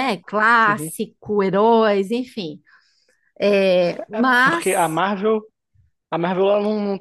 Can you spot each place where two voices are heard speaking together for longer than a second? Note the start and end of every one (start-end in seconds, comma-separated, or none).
none